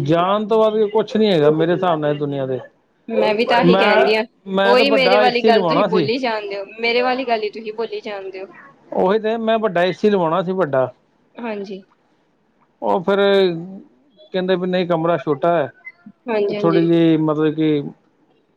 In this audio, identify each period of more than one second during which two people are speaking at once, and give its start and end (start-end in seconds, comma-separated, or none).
4.7-6.1